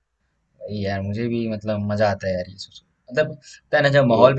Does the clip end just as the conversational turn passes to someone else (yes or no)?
no